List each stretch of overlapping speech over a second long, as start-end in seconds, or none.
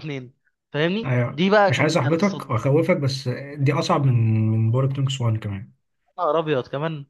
1.0-2.5